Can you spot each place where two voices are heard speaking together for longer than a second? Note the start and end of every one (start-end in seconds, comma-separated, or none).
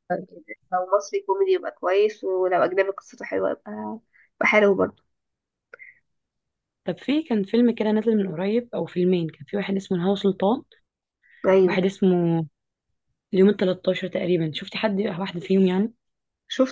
none